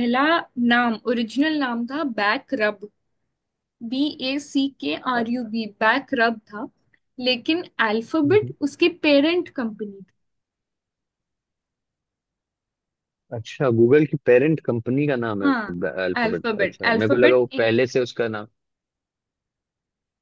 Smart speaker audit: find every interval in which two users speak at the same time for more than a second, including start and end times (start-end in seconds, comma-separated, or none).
16.2-17.7